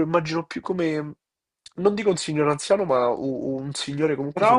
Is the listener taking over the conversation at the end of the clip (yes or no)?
yes